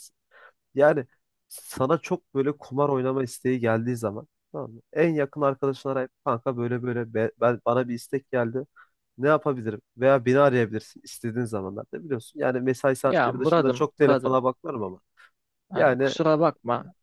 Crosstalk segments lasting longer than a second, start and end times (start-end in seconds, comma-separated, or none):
13.0-14.4